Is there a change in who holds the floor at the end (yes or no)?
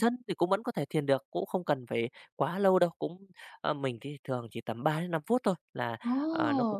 no